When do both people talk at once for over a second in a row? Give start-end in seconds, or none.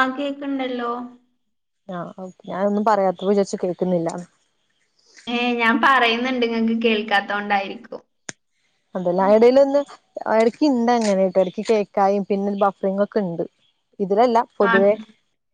none